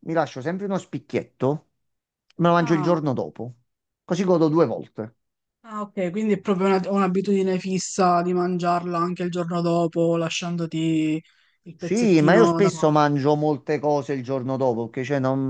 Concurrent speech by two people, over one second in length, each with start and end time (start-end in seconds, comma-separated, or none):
11.8-13.0